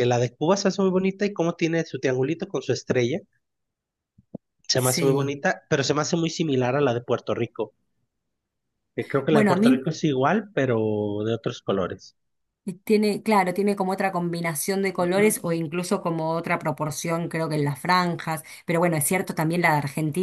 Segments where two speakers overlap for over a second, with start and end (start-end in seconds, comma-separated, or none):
none